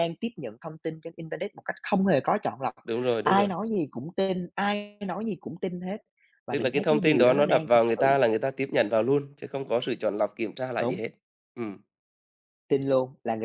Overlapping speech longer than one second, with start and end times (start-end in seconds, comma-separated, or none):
6.5-8.1